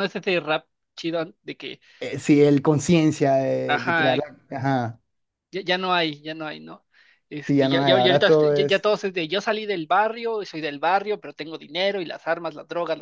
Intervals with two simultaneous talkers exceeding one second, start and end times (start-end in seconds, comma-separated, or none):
7.5-8.9